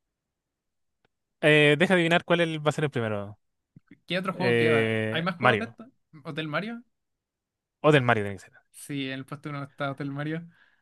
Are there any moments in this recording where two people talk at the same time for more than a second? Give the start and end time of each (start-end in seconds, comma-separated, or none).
4.3-5.8